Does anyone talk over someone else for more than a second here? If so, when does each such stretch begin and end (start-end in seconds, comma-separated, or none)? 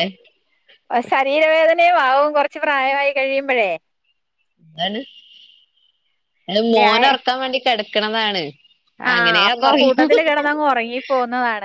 none